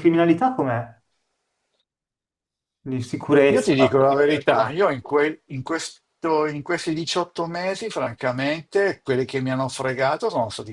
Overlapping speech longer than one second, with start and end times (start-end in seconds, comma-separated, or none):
3.5-4.8